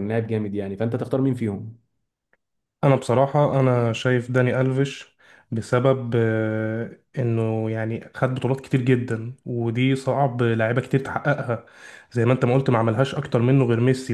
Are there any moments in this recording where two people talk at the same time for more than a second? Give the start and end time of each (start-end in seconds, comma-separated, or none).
none